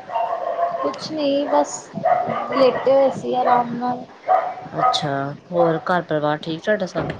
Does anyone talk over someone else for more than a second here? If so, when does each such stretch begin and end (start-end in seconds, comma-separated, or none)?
none